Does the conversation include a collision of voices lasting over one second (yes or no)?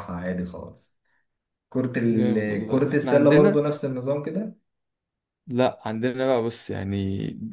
yes